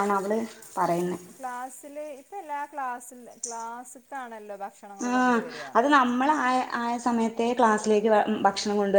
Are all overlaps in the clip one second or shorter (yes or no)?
yes